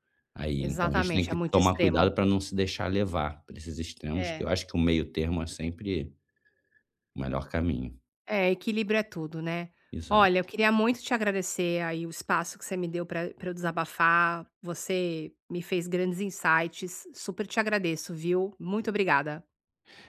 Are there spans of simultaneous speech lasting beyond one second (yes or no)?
yes